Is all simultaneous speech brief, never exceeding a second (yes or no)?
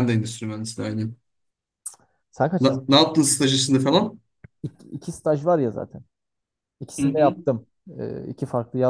yes